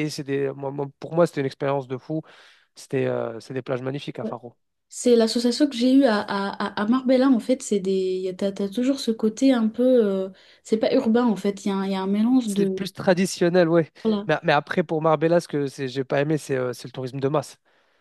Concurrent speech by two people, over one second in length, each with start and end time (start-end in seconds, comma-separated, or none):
none